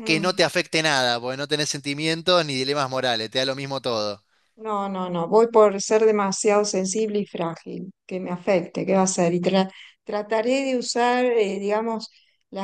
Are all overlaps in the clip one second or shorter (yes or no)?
yes